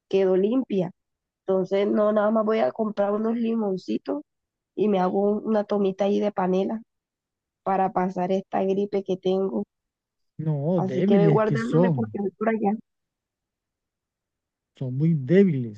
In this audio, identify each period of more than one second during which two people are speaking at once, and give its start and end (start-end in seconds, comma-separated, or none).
10.8-12.1